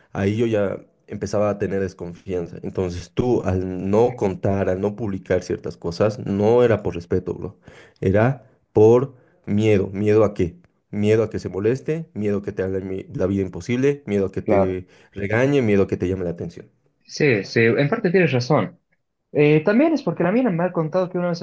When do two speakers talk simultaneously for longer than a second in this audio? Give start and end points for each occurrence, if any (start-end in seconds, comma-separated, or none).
none